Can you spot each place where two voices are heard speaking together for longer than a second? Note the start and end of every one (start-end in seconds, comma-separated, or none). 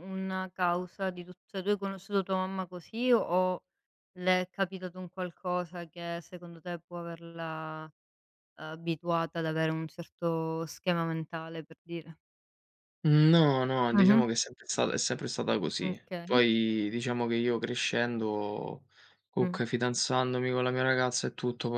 none